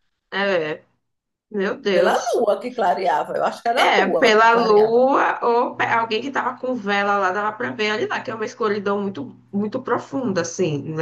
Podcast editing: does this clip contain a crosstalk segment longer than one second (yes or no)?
yes